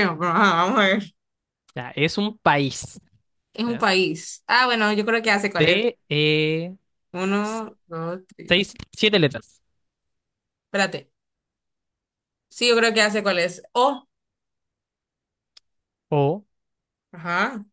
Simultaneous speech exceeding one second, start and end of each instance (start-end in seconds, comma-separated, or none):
none